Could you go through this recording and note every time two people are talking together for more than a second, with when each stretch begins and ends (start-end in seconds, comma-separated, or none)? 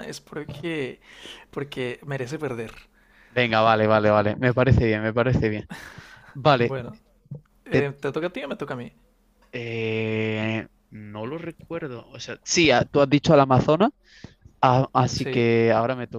none